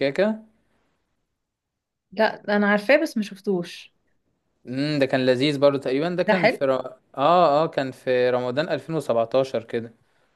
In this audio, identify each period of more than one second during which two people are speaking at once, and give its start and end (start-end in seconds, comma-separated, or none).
none